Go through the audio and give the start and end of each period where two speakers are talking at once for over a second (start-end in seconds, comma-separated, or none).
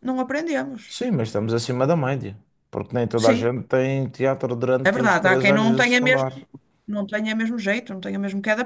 4.8-6.3